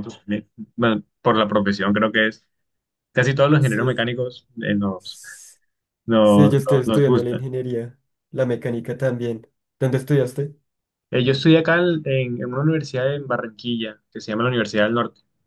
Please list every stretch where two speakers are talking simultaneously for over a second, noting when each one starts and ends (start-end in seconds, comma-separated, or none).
6.2-7.5